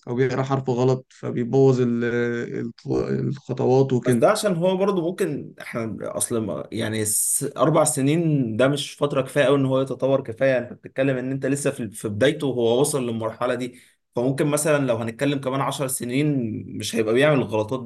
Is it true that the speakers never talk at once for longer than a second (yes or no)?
yes